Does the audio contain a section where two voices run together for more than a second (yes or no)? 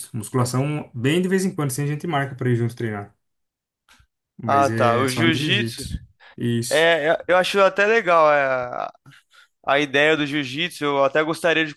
yes